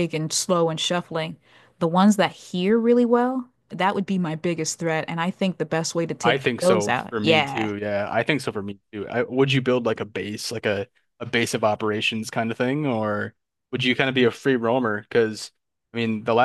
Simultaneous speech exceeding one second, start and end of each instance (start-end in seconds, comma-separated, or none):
6.2-7.7